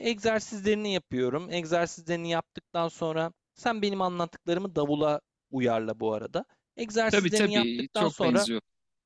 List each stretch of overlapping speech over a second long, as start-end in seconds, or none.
7.1-8.5